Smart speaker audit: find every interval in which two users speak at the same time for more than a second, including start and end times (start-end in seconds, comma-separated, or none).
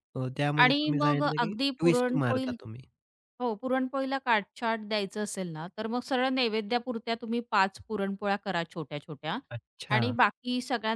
0.6-2.5